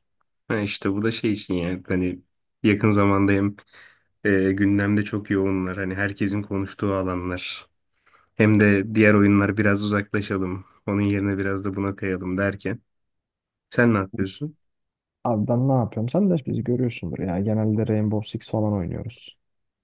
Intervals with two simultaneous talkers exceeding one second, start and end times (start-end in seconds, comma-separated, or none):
none